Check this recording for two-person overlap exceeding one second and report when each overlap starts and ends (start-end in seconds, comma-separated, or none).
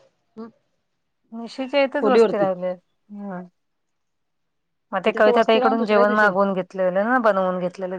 5.0-6.3